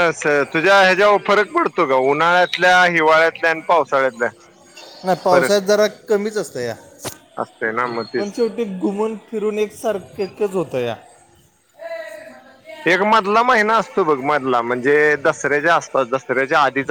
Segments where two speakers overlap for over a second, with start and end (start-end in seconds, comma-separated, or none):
none